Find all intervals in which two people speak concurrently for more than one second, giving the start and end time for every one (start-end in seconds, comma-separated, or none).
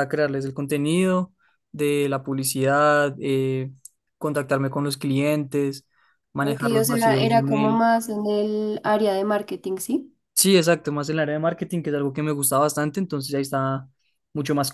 6.4-7.8